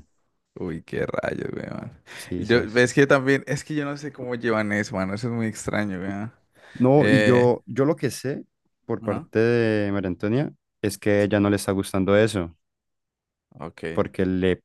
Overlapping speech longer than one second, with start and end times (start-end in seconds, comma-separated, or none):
none